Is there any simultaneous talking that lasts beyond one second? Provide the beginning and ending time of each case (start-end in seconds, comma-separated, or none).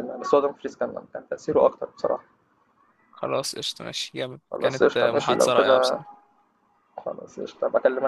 4.5-6.0